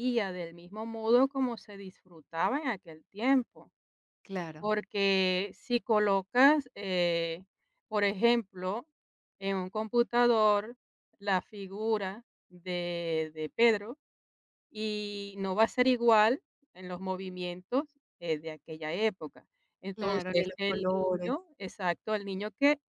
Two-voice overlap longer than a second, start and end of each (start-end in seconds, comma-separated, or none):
19.9-21.3